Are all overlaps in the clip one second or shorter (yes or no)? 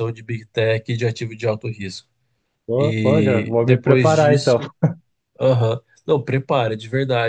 no